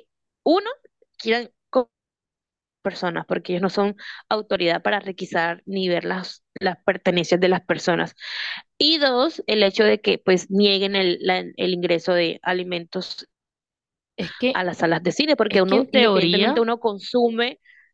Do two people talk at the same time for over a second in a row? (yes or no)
yes